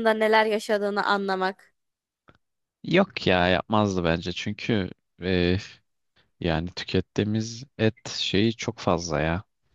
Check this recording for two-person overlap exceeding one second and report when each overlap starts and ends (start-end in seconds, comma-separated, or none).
none